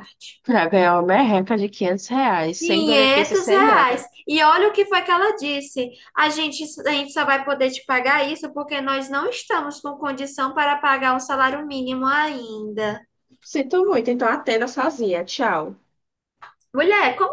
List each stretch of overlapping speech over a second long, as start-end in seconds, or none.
2.6-4.0